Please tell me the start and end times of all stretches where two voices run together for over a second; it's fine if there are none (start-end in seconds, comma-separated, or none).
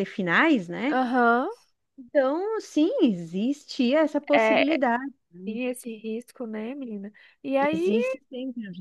none